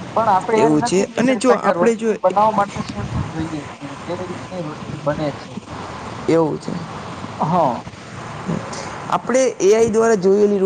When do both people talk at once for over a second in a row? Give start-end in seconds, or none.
0.6-2.1